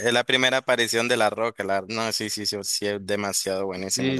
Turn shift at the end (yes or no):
yes